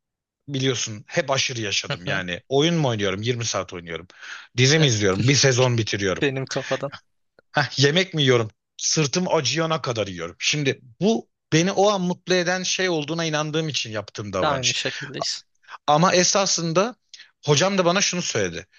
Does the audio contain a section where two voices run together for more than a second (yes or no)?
no